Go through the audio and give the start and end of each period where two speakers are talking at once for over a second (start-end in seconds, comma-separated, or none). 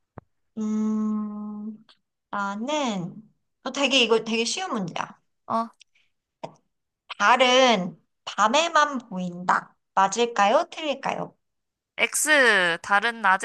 none